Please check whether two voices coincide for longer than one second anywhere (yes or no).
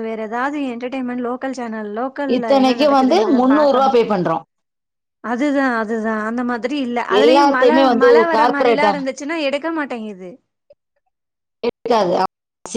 yes